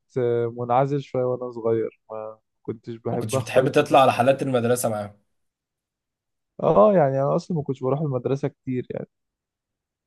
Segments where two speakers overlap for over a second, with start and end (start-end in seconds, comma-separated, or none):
3.1-4.4